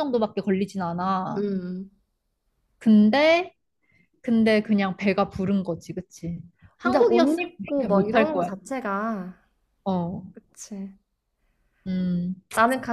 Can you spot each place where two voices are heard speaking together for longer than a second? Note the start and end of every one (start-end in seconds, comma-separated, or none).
6.8-8.5